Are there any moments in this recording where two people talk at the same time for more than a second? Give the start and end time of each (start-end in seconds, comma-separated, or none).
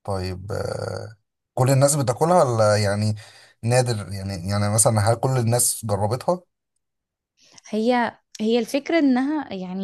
none